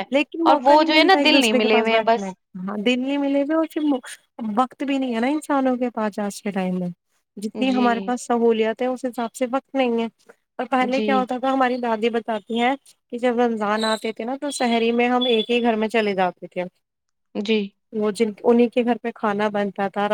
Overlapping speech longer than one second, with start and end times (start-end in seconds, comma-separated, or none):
0.5-2.3